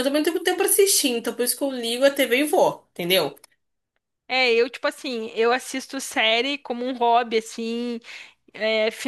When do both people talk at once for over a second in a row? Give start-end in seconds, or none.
none